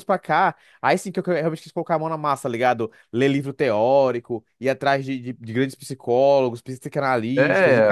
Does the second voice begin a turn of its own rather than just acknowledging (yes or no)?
yes